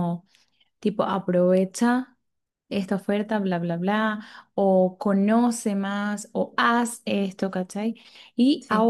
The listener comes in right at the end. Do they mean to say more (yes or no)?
no